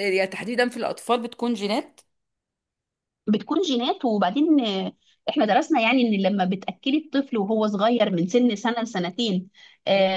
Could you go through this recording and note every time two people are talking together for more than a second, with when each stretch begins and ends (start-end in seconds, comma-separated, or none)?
none